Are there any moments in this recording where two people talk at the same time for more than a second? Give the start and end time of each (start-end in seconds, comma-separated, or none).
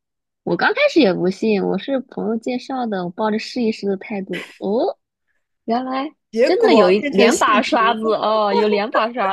6.3-8.0